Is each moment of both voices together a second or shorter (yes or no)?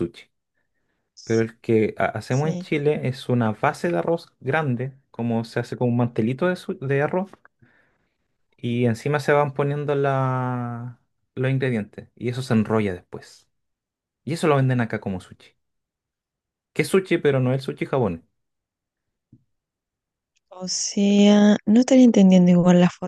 yes